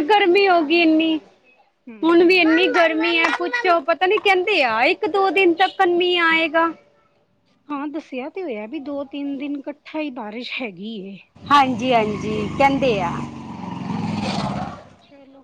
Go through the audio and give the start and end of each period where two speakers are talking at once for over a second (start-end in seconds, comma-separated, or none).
none